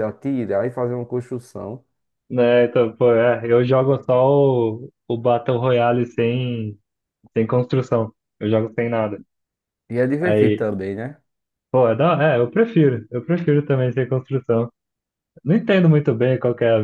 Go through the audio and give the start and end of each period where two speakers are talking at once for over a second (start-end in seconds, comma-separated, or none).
none